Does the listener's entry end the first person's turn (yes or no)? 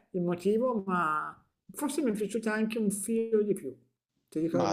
yes